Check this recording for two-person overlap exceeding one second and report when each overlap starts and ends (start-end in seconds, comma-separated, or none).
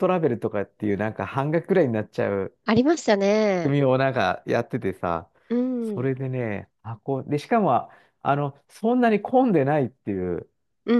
none